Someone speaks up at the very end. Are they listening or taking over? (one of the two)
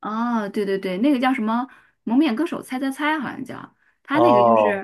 listening